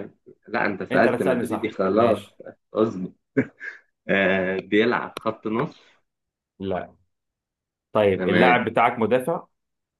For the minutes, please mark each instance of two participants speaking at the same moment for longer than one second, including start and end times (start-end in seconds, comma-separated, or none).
0.9-2.3